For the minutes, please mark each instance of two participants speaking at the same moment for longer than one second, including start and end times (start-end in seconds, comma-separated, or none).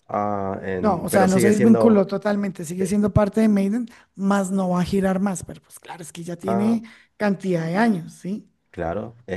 0.8-2.0